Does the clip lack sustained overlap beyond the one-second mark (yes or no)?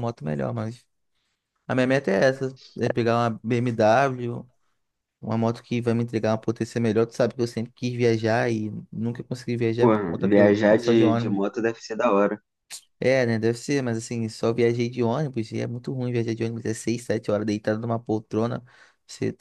no